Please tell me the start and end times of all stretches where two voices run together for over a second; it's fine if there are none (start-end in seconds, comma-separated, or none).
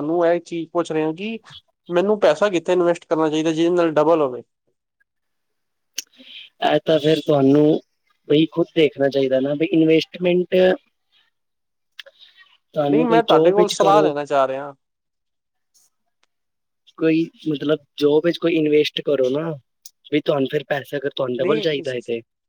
12.9-14.1